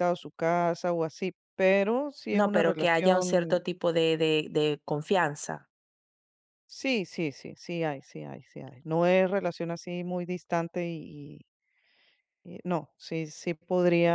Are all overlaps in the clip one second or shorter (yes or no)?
no